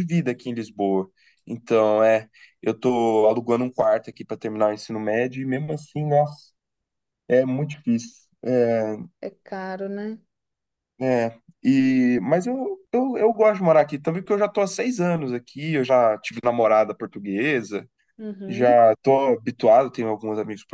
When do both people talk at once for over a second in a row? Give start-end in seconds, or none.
none